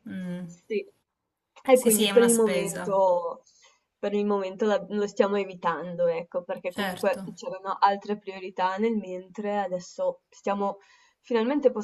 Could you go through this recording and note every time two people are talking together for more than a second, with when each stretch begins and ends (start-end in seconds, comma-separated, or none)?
1.7-3.0